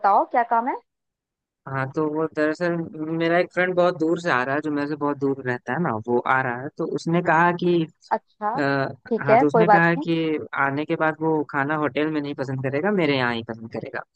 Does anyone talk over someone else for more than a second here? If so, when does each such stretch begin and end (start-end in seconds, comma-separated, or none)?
8.6-10.1